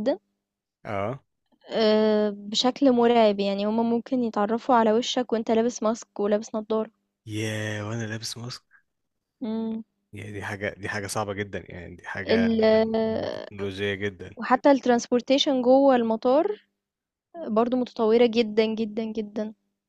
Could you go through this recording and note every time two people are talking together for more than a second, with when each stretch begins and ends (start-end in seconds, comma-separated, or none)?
none